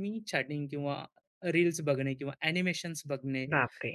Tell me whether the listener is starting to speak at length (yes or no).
no